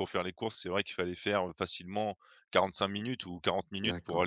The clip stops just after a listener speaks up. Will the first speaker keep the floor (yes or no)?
no